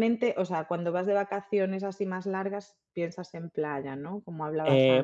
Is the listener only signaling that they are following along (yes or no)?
no